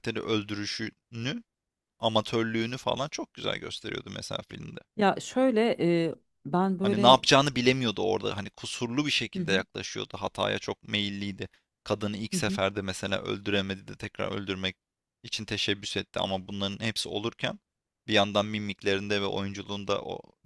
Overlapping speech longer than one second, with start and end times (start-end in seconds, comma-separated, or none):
none